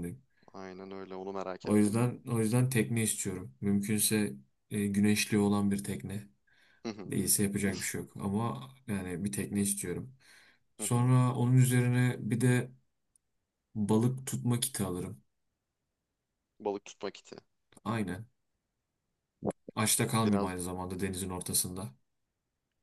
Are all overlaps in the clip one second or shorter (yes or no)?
yes